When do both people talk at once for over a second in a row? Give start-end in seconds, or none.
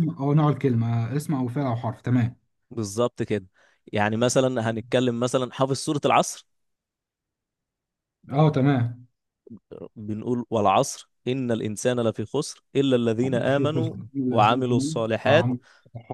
13.4-15.5